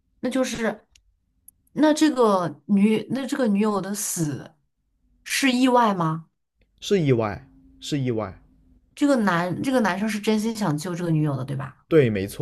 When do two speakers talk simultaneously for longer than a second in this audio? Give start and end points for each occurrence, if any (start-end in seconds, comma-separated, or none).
none